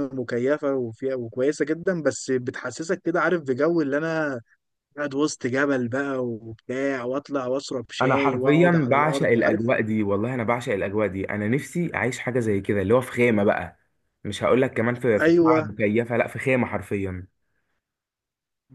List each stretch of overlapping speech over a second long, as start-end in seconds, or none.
8.0-9.7